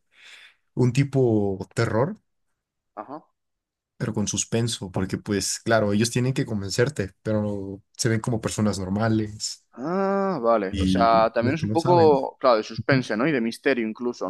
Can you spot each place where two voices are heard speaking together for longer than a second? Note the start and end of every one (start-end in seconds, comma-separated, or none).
10.7-12.1